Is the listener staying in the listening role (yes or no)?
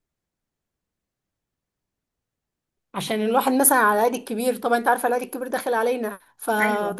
yes